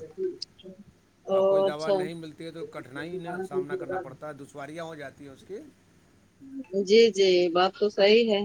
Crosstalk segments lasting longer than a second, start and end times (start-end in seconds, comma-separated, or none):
none